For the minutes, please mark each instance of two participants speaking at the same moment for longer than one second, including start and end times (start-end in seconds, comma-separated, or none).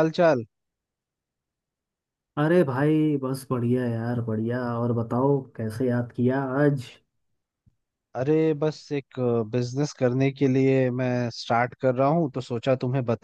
none